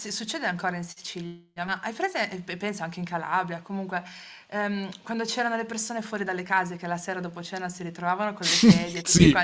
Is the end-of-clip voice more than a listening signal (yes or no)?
no